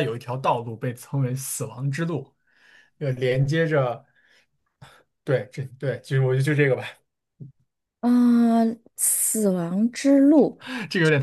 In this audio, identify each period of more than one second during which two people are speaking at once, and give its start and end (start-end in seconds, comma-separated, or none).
none